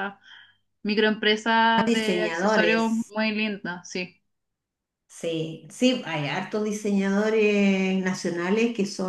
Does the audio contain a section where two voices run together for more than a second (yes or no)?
yes